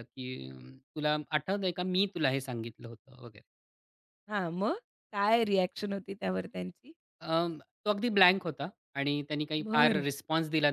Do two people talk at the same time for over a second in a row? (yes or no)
no